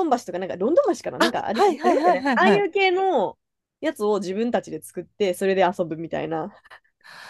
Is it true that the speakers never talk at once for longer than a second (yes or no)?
no